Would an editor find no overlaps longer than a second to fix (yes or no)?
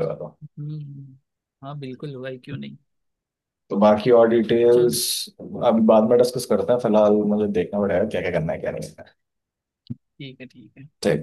yes